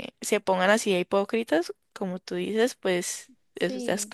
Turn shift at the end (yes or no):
yes